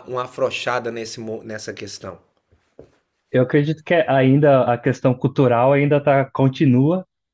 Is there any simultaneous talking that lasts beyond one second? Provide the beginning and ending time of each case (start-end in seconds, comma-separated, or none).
none